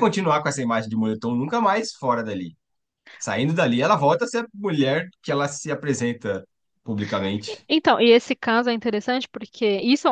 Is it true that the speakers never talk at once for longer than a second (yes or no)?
yes